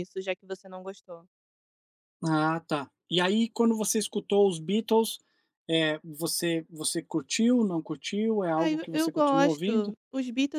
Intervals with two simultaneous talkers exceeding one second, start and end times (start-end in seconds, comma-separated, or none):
8.6-9.9